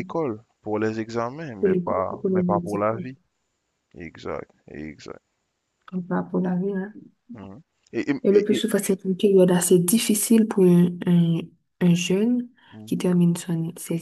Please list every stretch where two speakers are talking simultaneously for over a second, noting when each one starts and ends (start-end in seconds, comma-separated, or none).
1.6-2.9